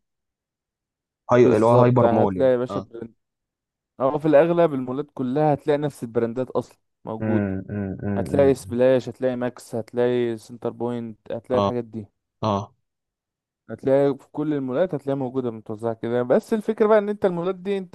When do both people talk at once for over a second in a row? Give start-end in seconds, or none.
1.4-2.9